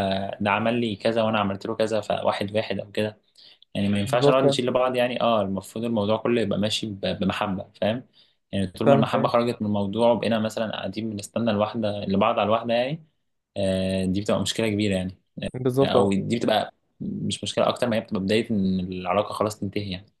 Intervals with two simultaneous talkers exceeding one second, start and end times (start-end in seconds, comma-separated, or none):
none